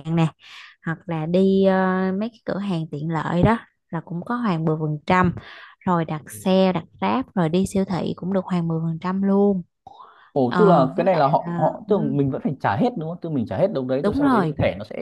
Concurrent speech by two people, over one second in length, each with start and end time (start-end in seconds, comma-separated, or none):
10.5-12.2